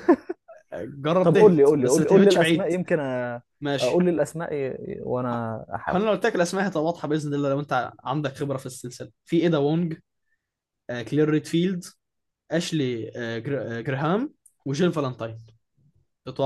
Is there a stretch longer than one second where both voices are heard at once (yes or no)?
yes